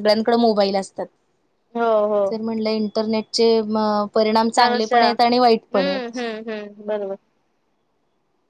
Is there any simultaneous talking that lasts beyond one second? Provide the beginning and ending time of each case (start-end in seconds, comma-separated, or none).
4.6-6.2